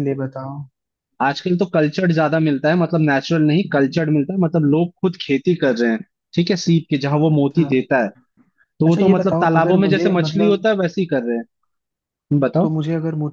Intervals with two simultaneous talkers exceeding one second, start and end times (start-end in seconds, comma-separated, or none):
8.9-10.6